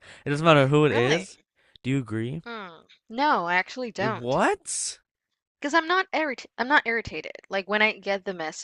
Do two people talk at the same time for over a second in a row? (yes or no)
no